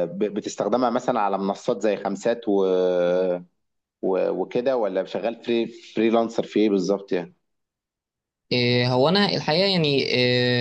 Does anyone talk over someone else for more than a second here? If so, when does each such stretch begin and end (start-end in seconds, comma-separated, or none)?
none